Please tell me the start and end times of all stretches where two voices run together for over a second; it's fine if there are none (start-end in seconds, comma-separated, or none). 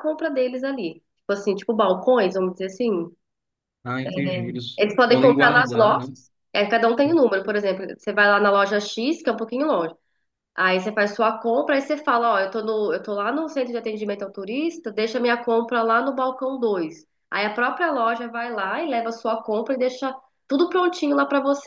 4.8-6.1